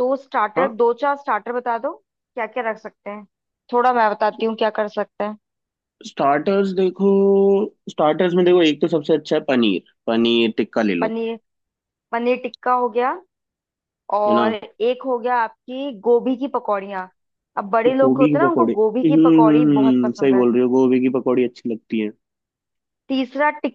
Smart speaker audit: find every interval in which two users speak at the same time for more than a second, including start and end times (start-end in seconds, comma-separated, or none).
17.9-20.4